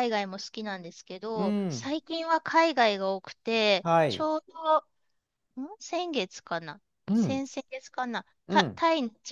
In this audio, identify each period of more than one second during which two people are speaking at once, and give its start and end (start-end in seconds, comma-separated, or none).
none